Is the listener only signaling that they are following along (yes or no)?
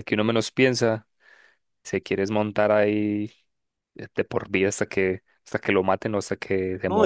no